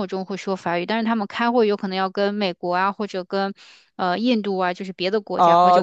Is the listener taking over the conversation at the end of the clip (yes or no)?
yes